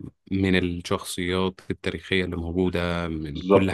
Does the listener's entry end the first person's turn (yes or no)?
yes